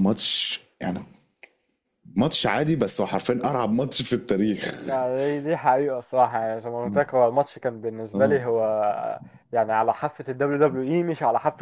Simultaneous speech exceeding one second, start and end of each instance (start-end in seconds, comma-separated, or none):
none